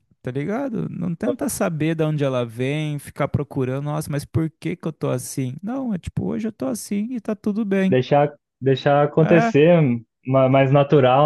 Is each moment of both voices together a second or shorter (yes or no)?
yes